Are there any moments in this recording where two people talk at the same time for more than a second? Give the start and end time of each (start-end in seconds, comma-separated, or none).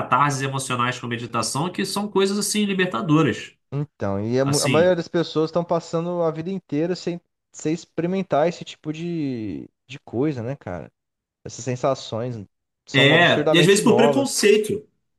12.9-14.4